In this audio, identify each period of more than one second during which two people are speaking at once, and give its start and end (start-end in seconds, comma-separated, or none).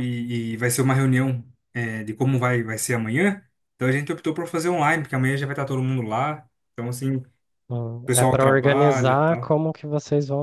8.1-9.5